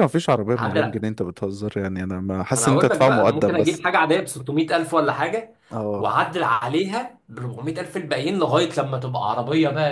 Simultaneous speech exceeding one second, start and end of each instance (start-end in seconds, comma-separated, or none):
2.6-3.8